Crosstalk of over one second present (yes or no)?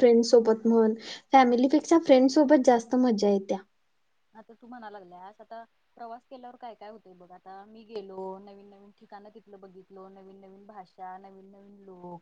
no